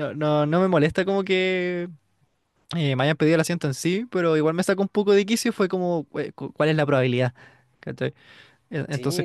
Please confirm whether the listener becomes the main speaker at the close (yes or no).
yes